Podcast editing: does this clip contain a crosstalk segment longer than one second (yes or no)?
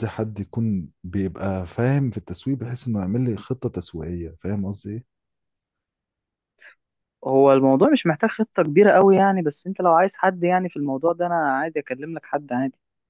no